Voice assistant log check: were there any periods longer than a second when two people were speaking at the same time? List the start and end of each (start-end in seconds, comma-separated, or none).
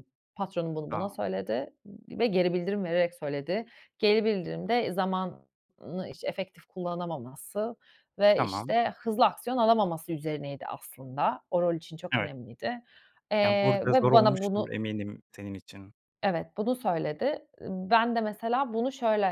13.4-14.7